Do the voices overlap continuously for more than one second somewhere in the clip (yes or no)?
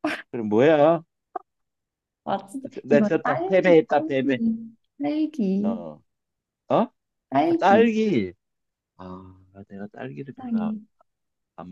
yes